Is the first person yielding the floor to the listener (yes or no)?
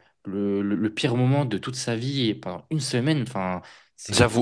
yes